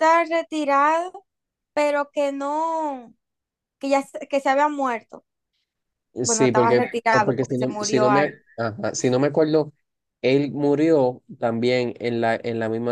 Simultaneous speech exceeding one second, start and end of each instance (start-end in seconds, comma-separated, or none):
6.2-8.3